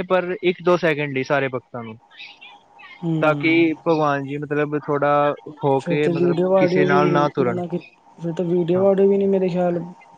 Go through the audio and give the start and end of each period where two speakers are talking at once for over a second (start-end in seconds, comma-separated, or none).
5.8-7.6